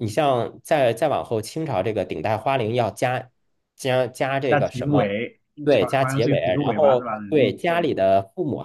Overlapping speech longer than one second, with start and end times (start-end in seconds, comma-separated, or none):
6.0-7.9